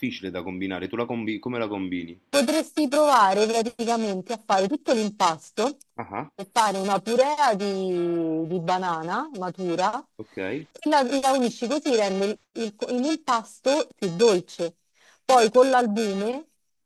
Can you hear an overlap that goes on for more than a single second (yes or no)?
no